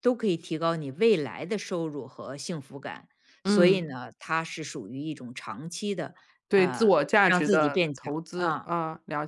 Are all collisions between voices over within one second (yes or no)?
no